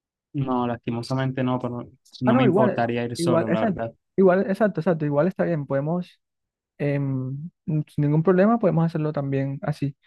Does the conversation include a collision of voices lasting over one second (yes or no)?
yes